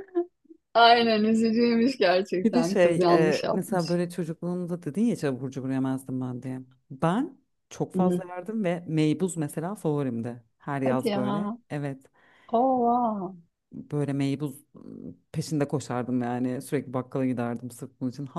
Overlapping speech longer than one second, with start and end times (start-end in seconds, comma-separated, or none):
2.4-4.0